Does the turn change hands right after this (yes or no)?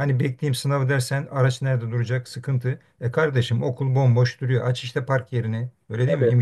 no